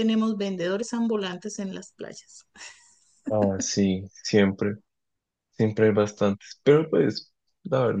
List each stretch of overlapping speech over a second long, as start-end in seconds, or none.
none